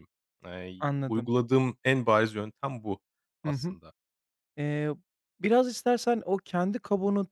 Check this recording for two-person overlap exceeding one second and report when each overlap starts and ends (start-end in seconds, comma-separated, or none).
none